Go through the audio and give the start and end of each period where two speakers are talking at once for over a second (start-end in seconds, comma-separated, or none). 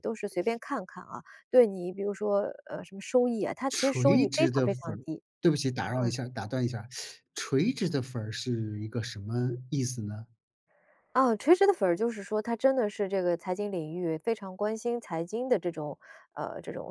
3.7-5.0